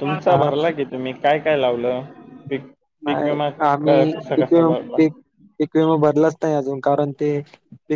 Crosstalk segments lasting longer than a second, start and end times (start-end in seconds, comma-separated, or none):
none